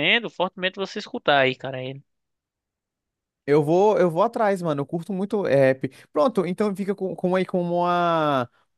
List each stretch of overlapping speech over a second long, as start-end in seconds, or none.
none